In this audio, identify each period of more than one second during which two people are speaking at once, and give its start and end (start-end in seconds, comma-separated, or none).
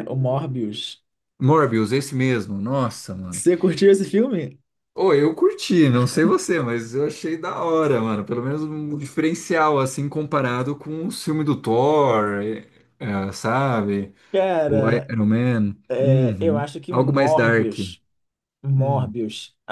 15.9-17.7